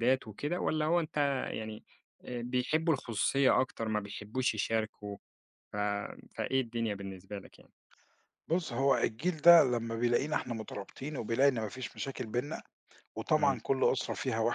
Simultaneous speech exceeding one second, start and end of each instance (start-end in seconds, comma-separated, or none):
none